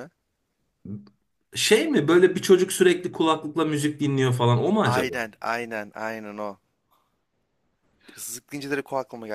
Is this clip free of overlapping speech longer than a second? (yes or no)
yes